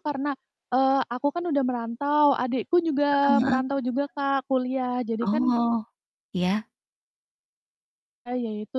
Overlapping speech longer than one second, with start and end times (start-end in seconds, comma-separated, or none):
none